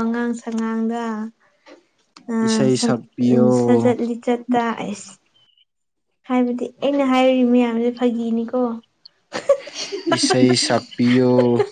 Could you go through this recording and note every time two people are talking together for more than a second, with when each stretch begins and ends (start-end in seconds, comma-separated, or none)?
none